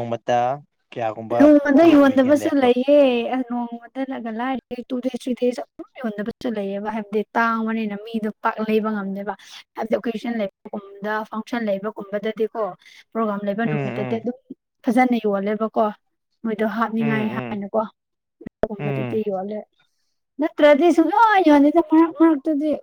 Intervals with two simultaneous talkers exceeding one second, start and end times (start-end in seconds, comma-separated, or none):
none